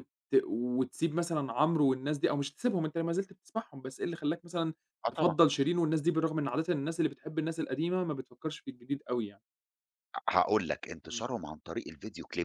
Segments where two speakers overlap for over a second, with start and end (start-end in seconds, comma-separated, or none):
none